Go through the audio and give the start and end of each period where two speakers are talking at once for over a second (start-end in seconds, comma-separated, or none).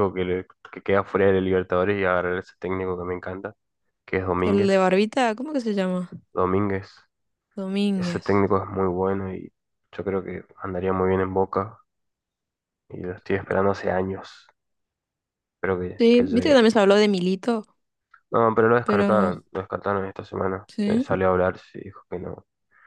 none